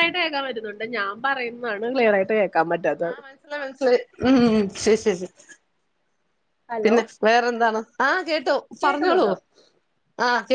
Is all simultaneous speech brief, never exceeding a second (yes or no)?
yes